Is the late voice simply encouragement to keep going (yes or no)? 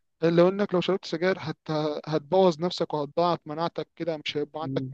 yes